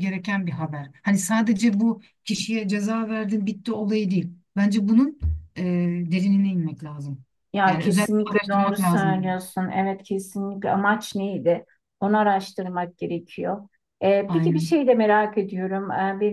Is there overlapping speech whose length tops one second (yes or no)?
yes